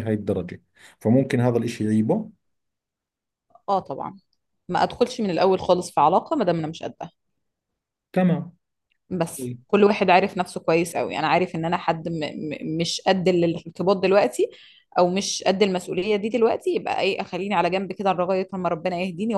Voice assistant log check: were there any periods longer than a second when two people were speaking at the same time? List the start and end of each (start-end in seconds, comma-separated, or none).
none